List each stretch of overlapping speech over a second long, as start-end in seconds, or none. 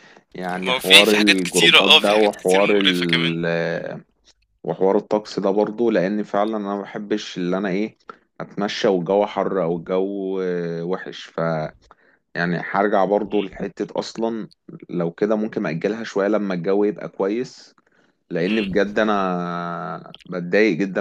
0.6-3.4